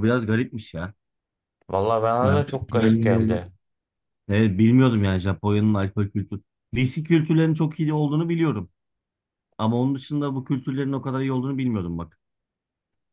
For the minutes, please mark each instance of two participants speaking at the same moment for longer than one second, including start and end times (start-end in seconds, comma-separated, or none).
2.2-3.5